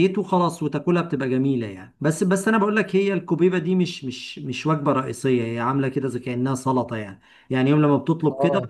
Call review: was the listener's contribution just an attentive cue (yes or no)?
yes